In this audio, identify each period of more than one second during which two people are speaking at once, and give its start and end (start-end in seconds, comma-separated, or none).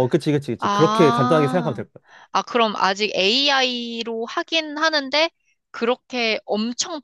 0.6-1.8